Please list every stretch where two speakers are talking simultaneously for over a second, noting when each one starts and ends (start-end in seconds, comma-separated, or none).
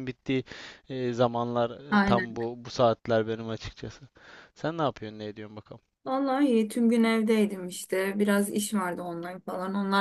none